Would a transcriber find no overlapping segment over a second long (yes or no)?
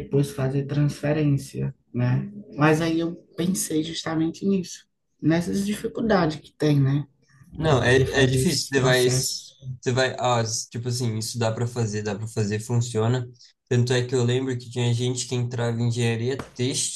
no